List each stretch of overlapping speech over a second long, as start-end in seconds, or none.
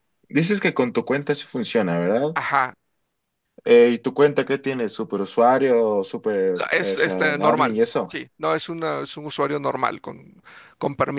6.7-8.2